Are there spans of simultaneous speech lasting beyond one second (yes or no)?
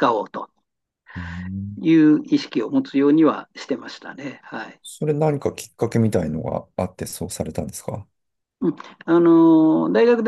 no